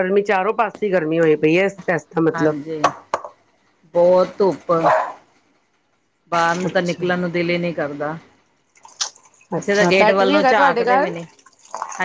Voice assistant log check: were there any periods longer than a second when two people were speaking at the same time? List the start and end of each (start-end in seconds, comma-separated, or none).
9.6-11.1